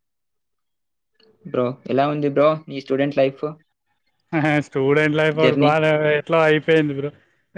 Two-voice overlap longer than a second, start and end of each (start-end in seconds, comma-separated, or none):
none